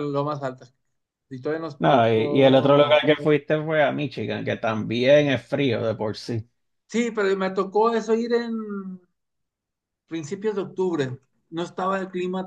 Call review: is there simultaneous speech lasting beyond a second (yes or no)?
yes